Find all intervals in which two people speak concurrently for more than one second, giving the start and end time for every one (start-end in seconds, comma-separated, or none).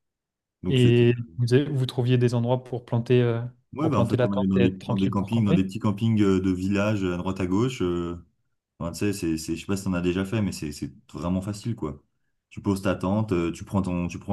3.8-5.7